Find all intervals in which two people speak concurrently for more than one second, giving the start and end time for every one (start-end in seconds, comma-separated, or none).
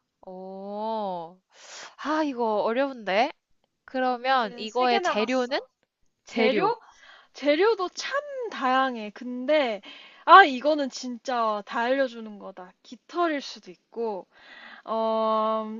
4.2-5.6